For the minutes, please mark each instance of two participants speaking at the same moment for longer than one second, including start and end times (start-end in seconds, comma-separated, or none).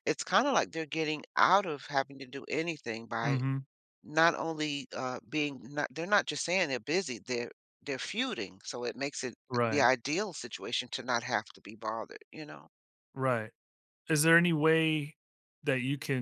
none